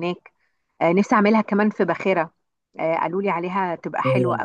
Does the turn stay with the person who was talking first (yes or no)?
no